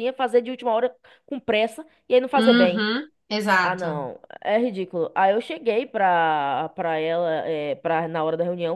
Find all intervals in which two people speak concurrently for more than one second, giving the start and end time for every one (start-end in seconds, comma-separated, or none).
none